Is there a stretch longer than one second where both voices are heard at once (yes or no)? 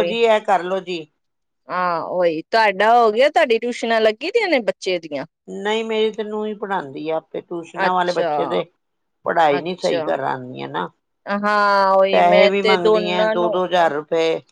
yes